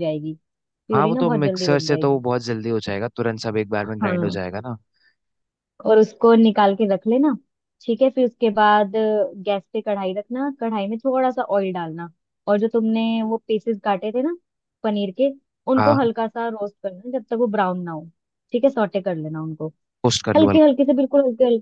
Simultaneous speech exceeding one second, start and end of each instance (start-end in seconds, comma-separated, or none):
0.9-2.2